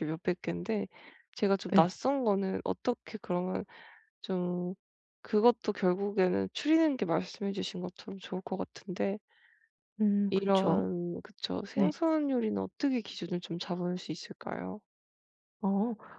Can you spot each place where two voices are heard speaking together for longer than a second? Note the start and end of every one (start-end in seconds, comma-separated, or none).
none